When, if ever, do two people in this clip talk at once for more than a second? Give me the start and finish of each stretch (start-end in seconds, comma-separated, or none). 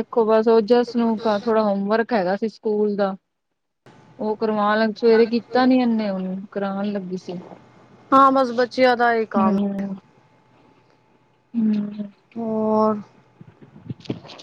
none